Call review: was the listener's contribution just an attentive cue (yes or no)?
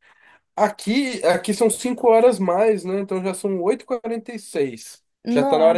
yes